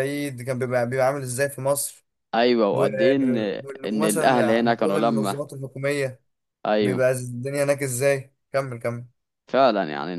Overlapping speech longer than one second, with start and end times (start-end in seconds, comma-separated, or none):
3.9-5.3